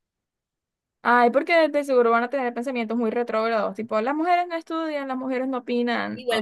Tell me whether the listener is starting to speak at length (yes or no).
yes